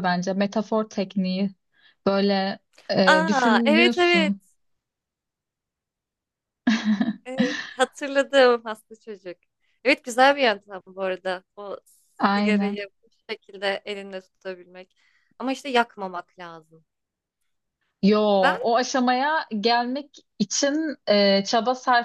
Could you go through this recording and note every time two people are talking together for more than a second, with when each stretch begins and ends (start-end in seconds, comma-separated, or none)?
3.0-4.3